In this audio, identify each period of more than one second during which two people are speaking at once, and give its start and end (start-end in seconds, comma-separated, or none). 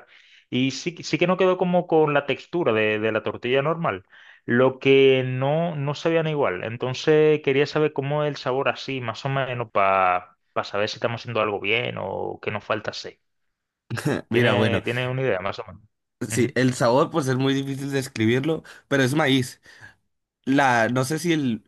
none